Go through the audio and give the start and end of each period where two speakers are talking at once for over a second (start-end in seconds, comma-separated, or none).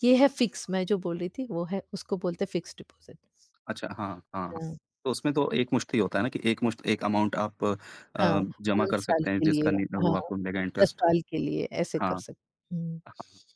8.2-10.2